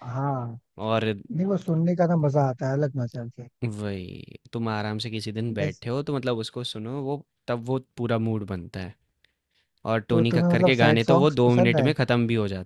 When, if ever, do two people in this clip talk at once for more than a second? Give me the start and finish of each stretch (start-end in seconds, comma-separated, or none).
10.1-11.9